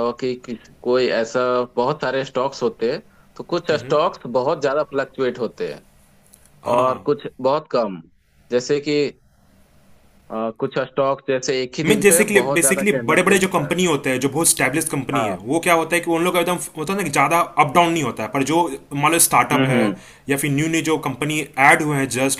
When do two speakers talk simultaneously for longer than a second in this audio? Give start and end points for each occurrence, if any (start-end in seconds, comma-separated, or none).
11.8-13.7